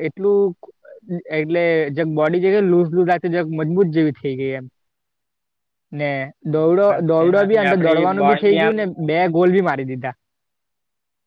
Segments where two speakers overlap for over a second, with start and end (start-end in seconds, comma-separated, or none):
6.6-8.7